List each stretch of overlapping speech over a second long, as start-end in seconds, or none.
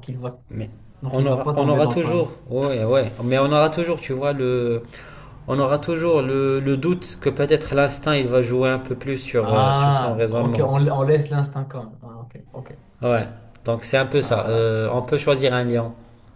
1.1-2.4, 9.4-10.7